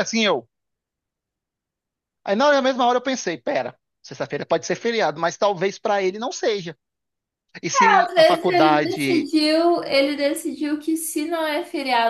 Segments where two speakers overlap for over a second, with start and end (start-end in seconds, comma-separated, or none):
8.1-9.3